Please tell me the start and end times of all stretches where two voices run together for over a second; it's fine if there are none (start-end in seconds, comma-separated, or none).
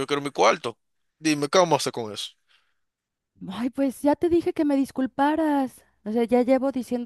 none